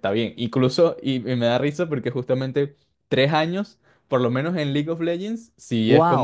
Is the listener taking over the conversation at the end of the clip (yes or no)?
yes